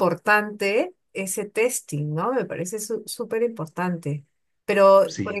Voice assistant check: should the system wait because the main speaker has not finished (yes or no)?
yes